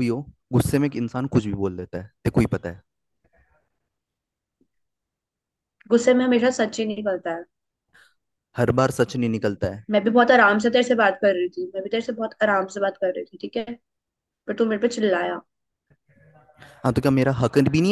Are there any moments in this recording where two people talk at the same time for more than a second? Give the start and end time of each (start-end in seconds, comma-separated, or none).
none